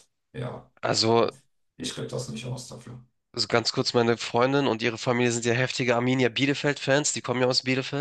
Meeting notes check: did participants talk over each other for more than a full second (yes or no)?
no